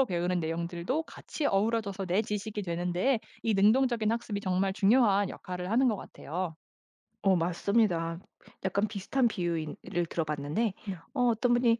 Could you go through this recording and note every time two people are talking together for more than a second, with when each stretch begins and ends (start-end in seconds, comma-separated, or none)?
none